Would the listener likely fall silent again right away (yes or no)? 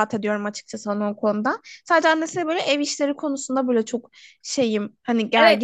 no